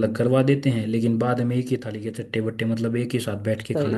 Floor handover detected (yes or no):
yes